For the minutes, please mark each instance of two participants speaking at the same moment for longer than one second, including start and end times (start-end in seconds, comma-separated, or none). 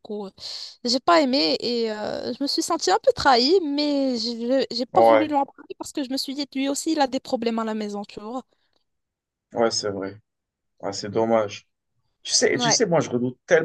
none